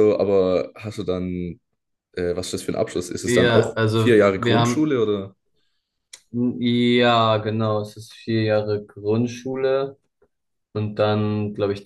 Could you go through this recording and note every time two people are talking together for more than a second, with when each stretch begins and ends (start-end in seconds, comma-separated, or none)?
3.2-4.9